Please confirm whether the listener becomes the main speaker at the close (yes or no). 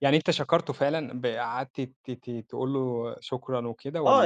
yes